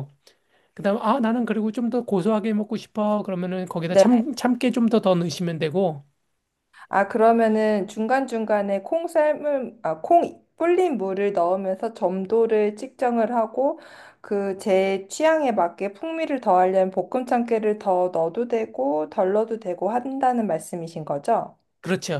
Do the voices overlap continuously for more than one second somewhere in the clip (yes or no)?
no